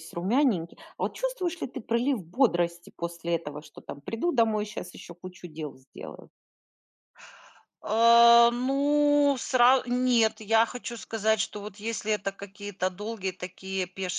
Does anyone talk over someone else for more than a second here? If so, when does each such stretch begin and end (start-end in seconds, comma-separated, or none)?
none